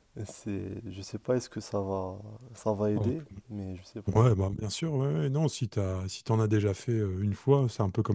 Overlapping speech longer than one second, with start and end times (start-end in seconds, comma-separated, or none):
none